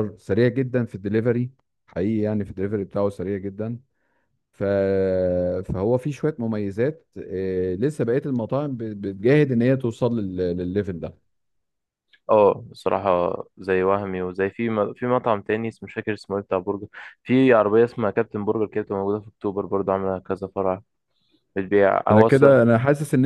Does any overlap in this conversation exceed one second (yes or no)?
no